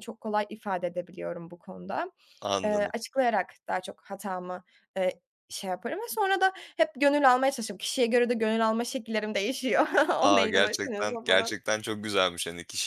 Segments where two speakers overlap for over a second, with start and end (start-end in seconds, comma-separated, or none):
10.2-11.6